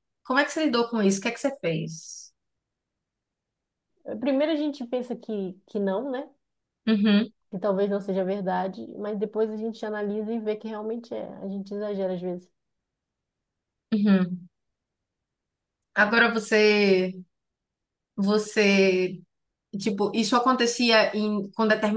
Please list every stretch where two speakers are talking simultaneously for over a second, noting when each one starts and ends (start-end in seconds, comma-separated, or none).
none